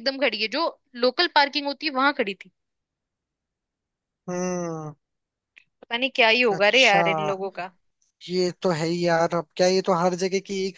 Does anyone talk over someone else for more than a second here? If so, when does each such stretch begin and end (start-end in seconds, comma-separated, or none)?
none